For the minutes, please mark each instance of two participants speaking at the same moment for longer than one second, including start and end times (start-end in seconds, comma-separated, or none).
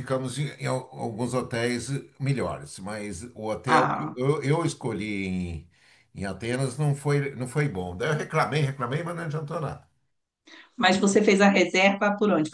none